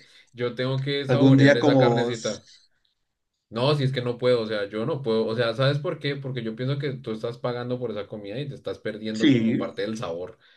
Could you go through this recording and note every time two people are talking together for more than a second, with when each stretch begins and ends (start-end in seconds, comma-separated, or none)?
1.1-2.4